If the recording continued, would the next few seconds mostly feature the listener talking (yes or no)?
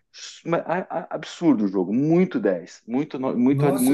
yes